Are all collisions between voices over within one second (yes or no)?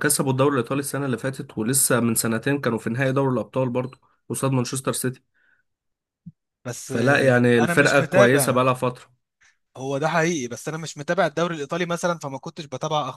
no